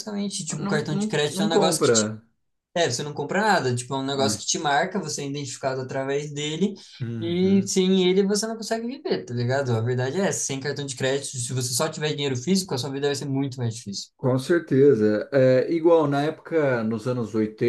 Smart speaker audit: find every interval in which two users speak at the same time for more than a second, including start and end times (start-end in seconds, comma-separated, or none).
0.6-2.1